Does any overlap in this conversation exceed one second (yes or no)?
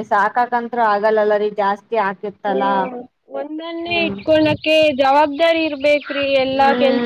no